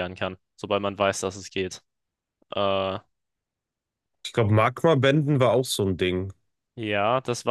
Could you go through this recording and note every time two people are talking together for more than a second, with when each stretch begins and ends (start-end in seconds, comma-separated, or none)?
none